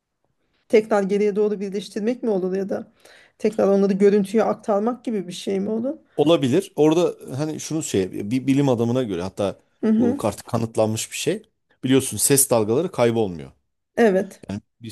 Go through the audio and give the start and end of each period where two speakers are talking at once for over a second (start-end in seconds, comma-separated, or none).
none